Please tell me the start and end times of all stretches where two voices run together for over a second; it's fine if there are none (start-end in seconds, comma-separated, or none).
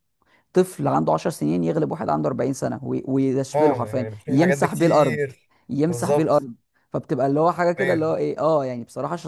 3.5-5.2